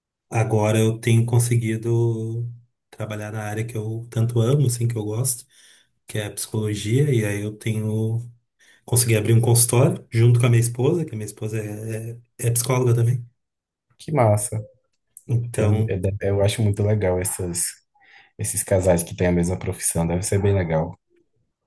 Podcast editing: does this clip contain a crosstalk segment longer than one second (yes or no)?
no